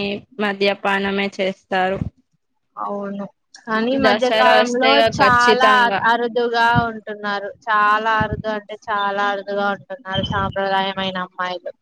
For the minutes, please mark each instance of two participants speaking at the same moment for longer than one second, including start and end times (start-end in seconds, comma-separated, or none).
4.0-6.0